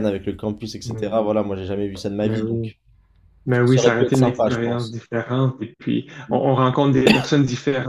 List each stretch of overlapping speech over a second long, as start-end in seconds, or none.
3.6-5.0